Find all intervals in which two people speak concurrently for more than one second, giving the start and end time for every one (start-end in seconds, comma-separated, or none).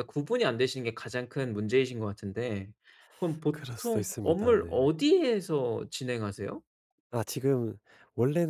3.5-4.7